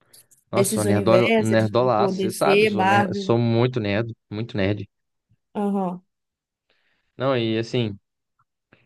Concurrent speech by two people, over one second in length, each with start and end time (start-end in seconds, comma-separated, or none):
0.5-3.3